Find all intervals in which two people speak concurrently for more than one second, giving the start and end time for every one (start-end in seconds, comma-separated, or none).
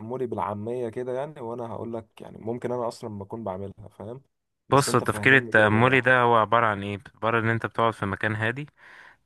4.7-6.2